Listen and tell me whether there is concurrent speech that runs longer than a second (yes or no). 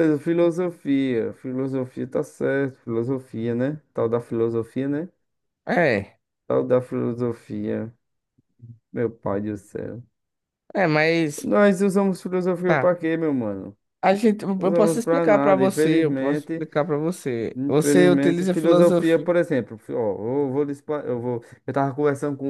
yes